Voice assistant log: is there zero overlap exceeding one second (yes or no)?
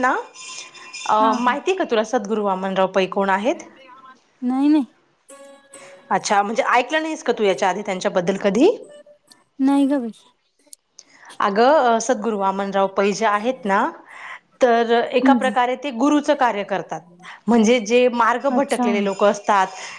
yes